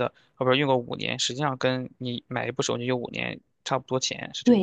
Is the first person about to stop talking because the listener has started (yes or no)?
yes